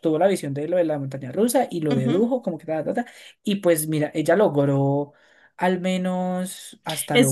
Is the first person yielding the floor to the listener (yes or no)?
yes